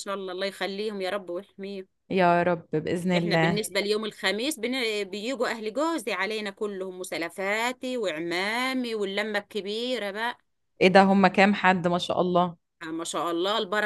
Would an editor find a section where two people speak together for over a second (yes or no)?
no